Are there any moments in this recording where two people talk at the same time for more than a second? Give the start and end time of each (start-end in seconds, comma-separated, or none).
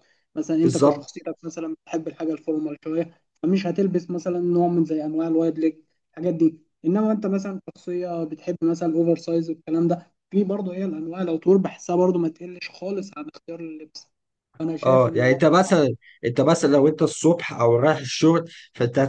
none